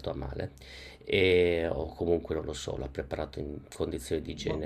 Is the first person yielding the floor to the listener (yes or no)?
no